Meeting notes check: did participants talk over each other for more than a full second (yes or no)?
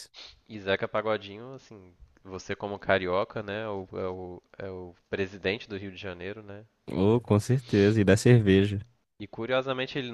no